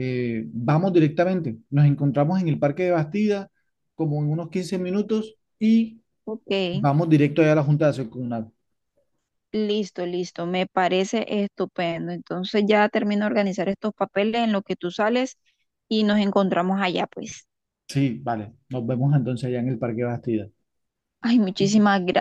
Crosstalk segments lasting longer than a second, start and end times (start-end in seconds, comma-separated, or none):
none